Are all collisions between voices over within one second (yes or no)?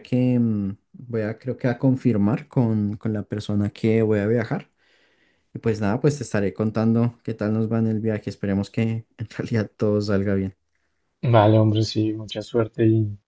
yes